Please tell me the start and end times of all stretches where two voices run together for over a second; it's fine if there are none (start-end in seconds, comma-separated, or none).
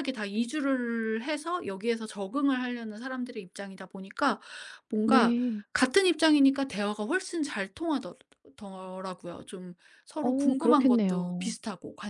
10.2-11.5